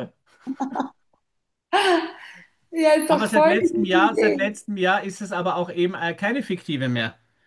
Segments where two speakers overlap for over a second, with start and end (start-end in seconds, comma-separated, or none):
3.3-4.6